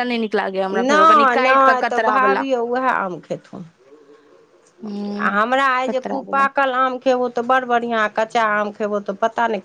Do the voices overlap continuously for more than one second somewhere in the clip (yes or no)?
yes